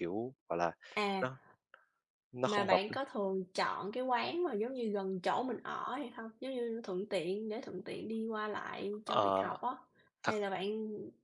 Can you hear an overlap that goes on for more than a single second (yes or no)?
no